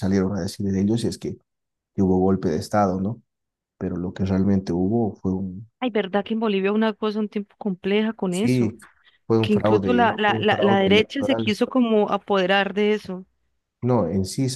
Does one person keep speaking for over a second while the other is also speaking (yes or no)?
yes